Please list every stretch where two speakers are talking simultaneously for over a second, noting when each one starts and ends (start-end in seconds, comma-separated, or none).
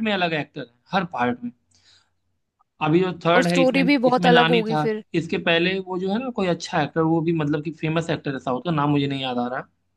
3.4-5.0